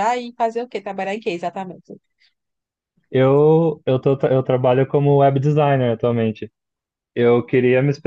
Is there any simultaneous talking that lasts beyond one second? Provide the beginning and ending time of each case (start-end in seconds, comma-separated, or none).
none